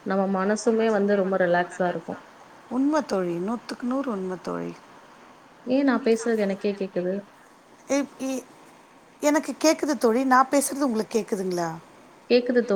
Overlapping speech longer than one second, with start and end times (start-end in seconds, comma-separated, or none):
none